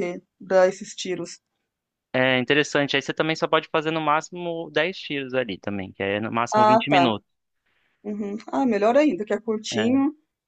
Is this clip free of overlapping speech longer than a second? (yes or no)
yes